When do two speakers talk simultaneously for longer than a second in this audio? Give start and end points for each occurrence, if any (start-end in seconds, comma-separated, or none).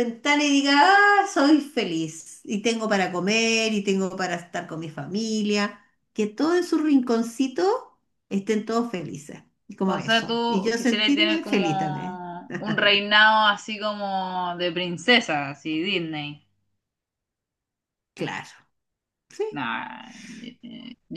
9.8-12.2